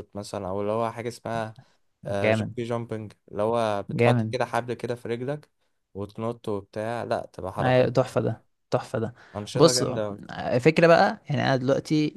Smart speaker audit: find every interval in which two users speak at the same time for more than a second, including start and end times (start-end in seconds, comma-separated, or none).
none